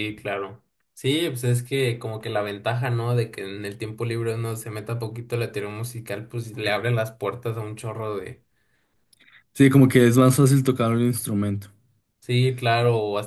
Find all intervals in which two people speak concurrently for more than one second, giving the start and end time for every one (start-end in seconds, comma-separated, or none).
none